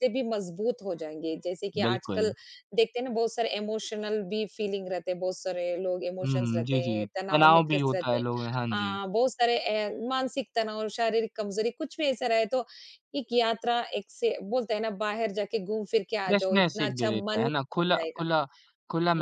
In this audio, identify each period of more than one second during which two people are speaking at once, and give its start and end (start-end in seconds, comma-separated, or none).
6.2-8.2, 16.3-18.2